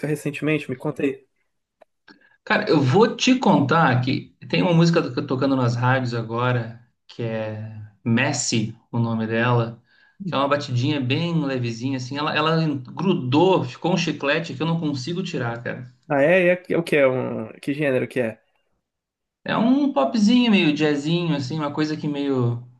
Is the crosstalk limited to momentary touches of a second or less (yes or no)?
yes